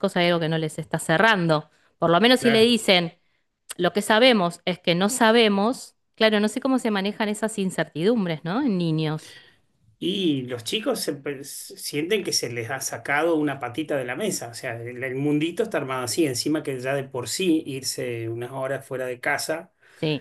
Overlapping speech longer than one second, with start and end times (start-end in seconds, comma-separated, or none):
none